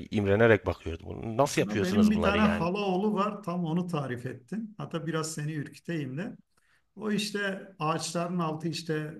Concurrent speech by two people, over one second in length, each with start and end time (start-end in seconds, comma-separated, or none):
1.4-2.7